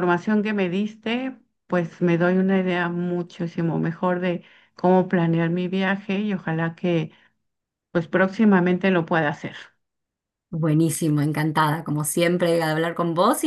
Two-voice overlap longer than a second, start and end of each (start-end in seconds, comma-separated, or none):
none